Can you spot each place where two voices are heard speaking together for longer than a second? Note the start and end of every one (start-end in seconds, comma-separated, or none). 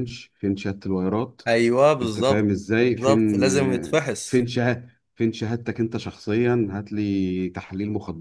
2.0-4.5